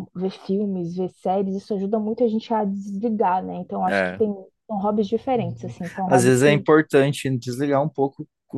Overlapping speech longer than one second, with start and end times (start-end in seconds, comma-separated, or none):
5.3-6.7